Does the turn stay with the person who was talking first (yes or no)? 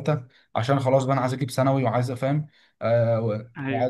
yes